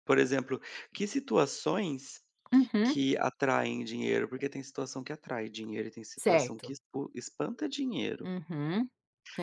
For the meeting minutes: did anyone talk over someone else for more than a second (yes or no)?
no